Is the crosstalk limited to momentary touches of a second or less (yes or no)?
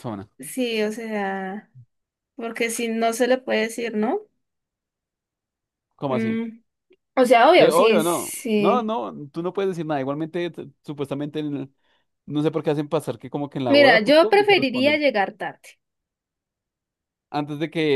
no